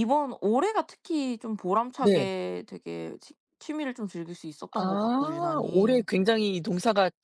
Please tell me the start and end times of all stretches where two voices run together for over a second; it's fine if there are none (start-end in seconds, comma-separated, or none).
4.8-6.0